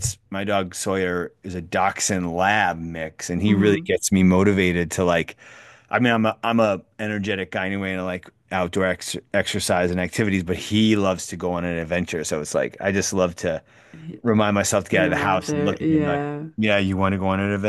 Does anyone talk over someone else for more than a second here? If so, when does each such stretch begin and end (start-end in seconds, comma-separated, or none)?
15.1-16.4